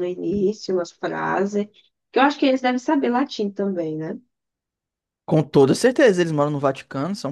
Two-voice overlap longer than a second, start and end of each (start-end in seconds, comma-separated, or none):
none